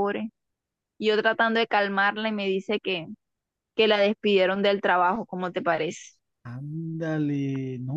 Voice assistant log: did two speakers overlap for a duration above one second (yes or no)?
no